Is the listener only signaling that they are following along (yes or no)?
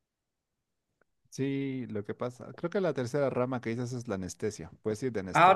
no